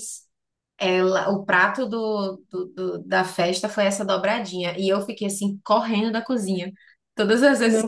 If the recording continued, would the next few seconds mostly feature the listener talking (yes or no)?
no